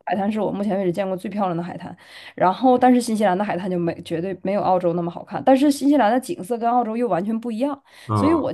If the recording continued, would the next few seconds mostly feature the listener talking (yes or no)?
no